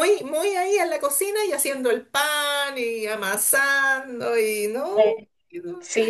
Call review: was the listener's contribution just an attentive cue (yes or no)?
no